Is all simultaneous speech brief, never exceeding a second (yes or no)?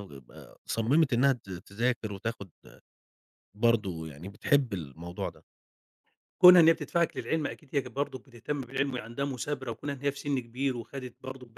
yes